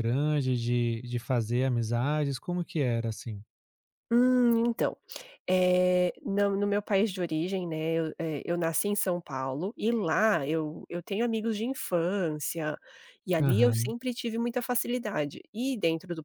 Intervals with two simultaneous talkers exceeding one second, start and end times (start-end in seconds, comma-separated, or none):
none